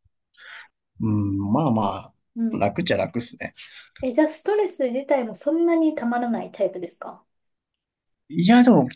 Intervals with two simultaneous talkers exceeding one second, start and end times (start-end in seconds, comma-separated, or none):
none